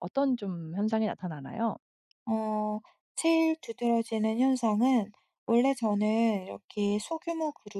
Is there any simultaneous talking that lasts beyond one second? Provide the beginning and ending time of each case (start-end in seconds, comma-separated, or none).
none